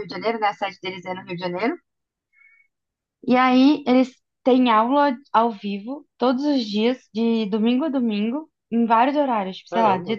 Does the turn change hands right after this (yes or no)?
no